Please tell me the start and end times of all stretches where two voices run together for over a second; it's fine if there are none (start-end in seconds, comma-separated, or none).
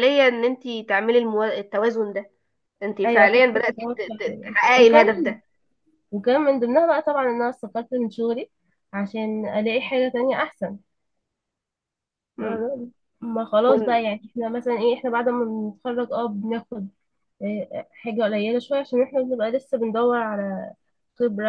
3.0-5.4